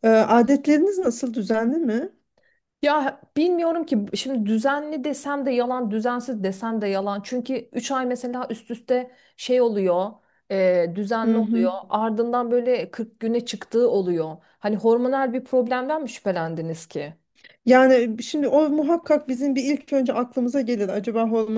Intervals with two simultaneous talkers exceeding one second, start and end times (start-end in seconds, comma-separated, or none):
none